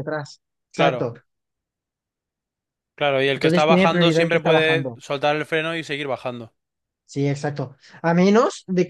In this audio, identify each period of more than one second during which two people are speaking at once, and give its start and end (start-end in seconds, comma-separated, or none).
3.3-5.0